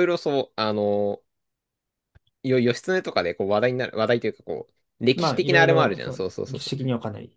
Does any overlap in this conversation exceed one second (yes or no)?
yes